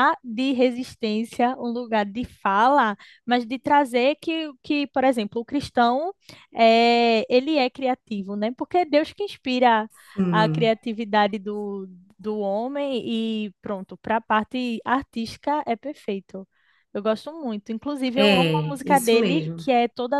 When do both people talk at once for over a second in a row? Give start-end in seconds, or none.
18.1-19.6